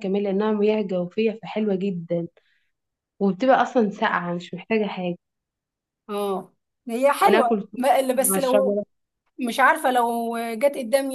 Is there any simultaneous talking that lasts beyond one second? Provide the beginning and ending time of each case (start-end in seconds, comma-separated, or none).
7.2-8.8